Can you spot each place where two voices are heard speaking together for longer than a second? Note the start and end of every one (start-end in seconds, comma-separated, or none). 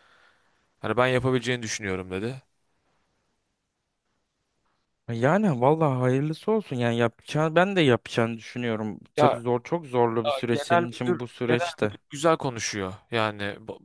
10.2-11.9